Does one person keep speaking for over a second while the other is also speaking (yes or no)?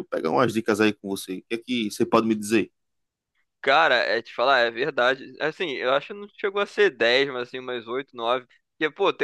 no